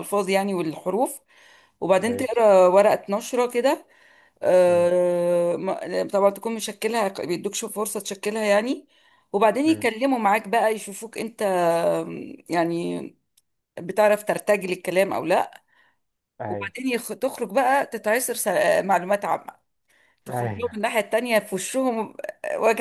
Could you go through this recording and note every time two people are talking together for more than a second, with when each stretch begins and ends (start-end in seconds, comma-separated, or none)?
none